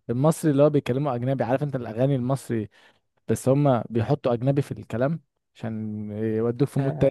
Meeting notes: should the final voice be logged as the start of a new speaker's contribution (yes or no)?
yes